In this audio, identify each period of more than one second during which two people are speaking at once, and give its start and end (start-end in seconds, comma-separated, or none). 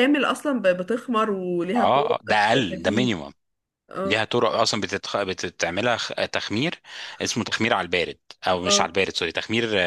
1.8-3.1